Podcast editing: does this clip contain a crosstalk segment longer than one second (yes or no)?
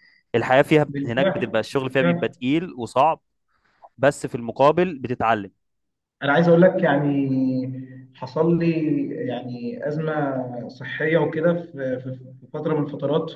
yes